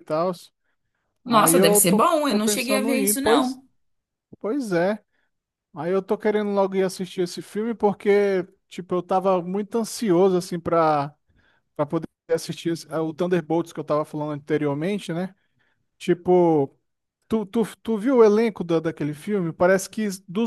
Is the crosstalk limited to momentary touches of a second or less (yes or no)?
no